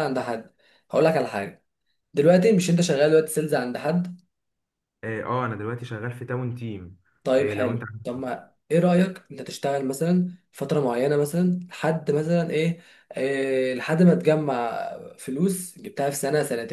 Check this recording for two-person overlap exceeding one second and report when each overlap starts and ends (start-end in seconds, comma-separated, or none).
none